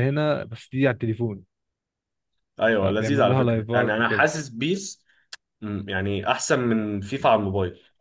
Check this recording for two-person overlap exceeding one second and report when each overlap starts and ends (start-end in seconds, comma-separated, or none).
2.7-4.3